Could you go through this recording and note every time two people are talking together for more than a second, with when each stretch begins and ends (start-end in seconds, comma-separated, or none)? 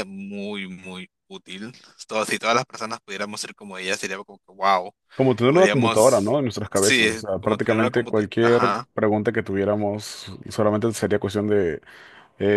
5.5-8.9